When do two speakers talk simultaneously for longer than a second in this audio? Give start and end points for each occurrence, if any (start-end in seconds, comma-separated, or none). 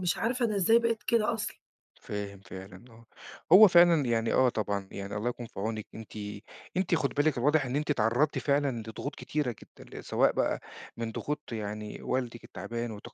none